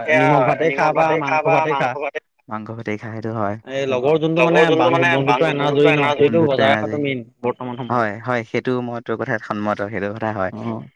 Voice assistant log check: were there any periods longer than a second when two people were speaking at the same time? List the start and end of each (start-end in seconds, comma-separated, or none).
5.3-7.0